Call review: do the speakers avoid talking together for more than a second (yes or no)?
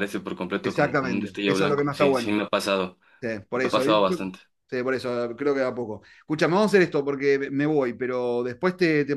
no